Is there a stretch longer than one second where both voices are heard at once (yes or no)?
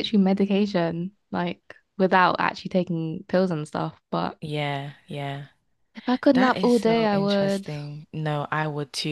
yes